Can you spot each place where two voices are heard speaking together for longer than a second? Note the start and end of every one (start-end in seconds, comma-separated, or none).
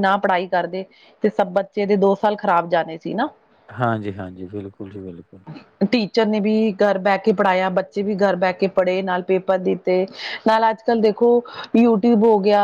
none